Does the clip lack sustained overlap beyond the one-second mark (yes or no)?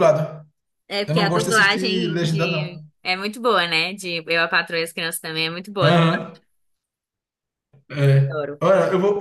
no